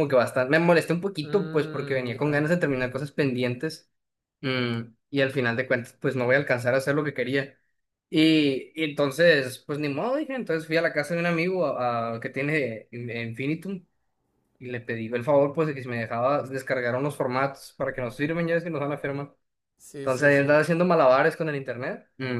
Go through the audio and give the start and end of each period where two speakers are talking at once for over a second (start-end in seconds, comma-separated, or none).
1.2-2.5